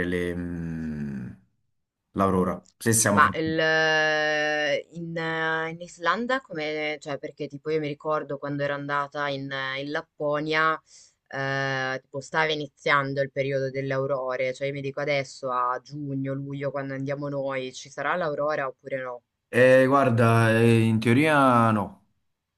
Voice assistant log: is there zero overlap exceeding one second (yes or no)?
yes